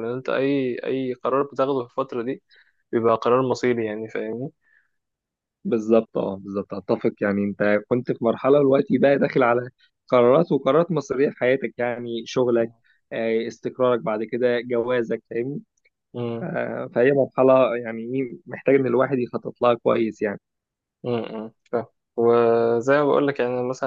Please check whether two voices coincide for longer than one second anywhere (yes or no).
no